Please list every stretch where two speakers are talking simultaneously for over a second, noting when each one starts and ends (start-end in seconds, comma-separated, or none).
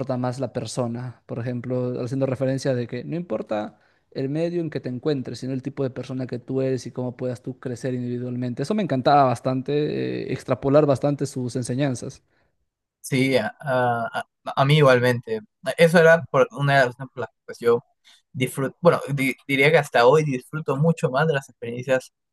none